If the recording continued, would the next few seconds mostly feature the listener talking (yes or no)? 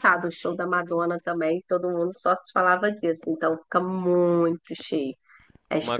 yes